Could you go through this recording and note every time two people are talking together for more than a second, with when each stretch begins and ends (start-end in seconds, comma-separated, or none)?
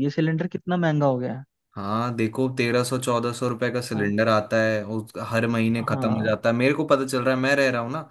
none